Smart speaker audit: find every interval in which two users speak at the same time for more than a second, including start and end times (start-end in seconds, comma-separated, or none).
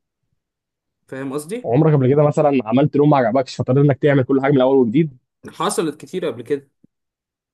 none